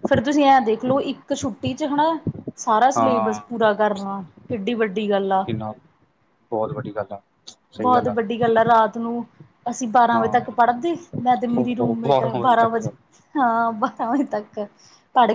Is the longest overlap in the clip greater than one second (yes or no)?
yes